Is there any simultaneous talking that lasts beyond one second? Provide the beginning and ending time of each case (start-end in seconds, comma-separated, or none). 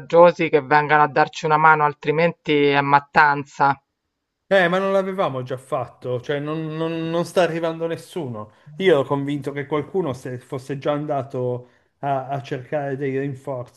none